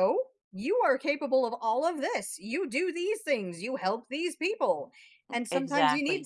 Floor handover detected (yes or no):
no